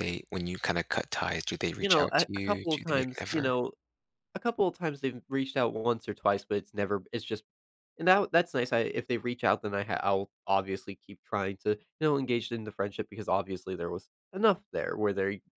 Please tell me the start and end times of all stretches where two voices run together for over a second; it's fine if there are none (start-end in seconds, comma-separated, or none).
1.8-3.5